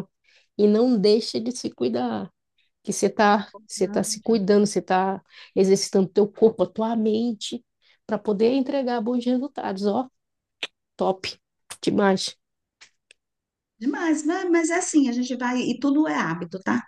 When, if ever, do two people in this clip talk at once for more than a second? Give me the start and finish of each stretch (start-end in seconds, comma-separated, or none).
none